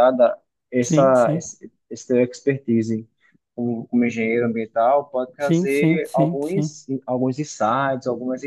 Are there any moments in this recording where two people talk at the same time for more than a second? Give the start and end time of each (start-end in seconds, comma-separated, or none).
5.4-6.8